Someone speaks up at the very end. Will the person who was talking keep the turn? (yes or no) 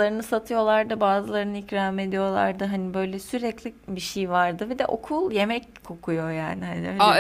no